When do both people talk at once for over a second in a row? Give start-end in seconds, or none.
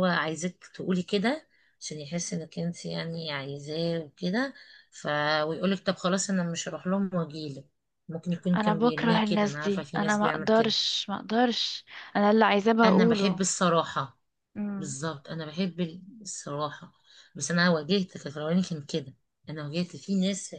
8.6-10.7